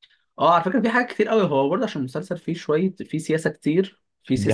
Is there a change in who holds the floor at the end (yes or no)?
no